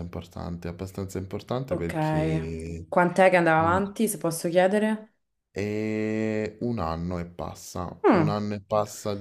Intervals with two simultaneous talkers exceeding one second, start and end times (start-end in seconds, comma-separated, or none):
none